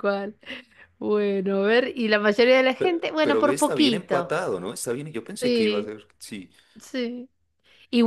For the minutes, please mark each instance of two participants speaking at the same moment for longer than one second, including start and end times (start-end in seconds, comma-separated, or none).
2.8-4.3